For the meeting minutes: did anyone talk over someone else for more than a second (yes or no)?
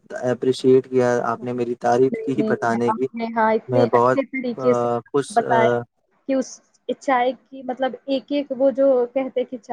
yes